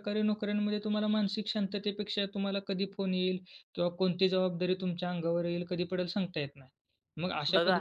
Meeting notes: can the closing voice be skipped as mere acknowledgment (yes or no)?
yes